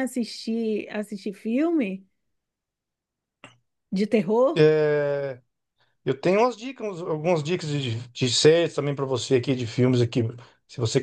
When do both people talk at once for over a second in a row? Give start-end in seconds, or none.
none